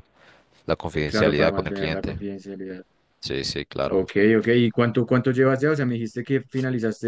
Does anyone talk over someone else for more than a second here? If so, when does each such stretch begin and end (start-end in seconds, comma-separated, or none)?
0.9-2.2